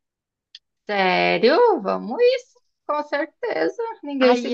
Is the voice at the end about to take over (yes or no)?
yes